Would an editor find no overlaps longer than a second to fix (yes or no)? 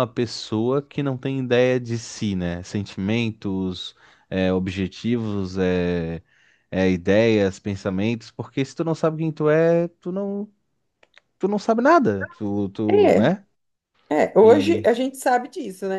yes